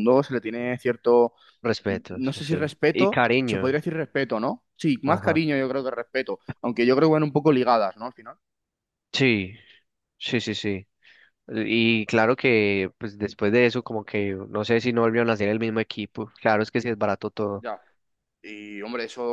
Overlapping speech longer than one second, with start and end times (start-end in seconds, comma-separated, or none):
1.9-3.8